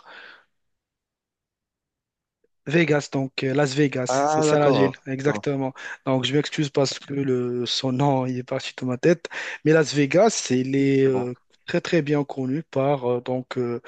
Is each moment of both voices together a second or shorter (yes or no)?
no